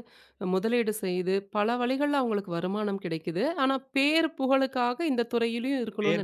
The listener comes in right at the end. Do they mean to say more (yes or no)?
yes